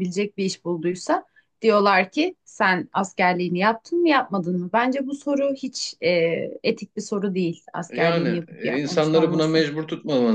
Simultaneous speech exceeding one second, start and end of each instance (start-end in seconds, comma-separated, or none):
7.9-9.6